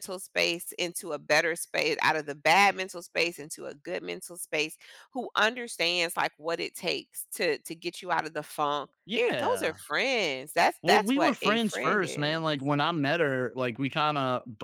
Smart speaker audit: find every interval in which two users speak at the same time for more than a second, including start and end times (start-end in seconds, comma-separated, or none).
10.8-12.4